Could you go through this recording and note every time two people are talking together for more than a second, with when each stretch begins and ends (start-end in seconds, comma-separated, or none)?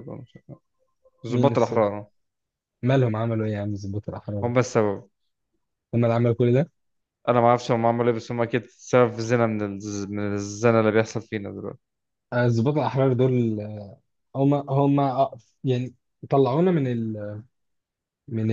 none